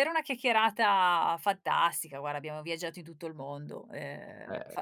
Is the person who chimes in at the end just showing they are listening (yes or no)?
no